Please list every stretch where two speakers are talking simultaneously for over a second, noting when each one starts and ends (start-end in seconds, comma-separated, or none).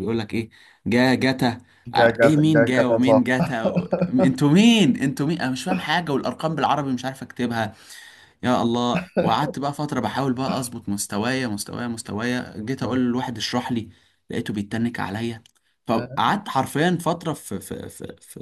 1.9-3.5